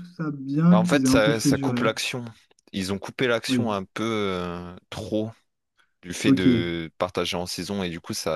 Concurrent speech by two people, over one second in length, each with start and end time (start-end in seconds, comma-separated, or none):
0.7-1.9